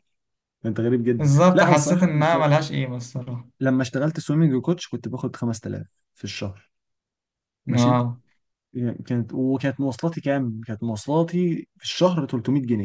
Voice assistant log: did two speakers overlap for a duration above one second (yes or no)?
yes